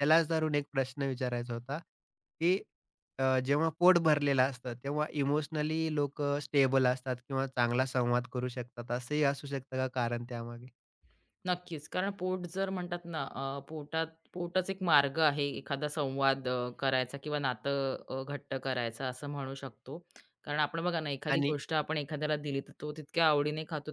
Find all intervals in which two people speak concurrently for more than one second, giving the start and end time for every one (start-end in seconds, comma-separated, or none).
none